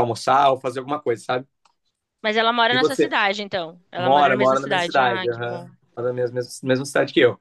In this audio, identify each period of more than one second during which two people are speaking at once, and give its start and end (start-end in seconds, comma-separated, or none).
4.0-5.7